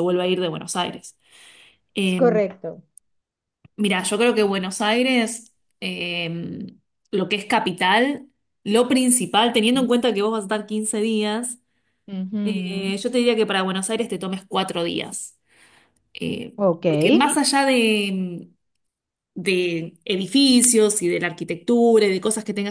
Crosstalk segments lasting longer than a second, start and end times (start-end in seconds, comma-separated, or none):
none